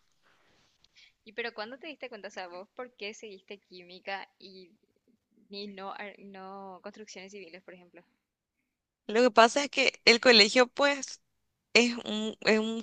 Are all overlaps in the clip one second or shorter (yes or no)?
yes